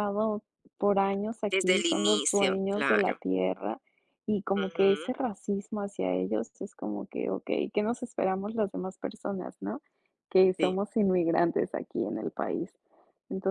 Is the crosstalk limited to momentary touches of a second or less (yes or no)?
no